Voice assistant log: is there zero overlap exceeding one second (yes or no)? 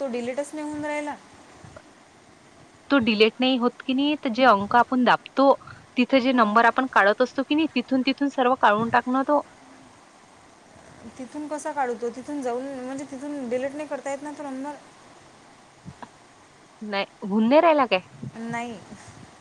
yes